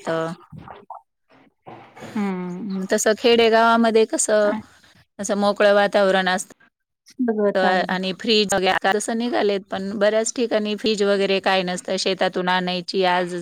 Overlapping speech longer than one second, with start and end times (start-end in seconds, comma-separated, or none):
none